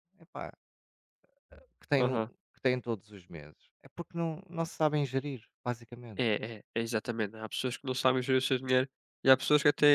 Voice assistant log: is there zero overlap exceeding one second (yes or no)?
yes